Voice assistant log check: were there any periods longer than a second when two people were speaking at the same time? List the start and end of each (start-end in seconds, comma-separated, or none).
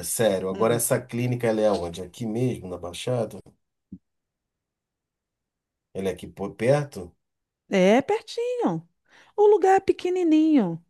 none